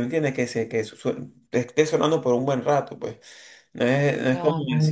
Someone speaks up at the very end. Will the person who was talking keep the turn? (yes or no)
yes